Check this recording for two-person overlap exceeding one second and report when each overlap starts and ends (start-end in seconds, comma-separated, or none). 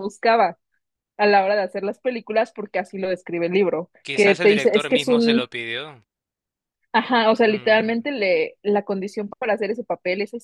4.0-5.5